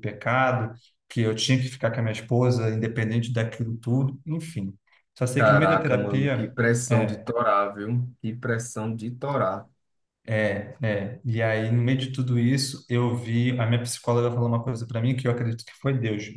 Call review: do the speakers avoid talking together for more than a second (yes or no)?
no